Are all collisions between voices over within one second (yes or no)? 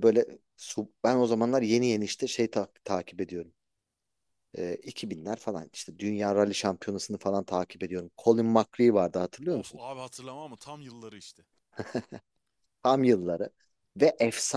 yes